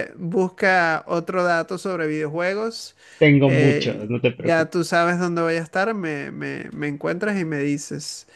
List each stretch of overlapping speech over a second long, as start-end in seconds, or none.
3.4-5.0